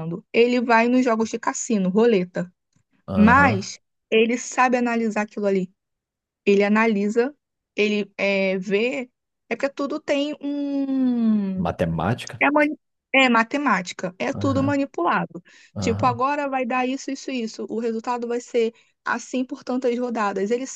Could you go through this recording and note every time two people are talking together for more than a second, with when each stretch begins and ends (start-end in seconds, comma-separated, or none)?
none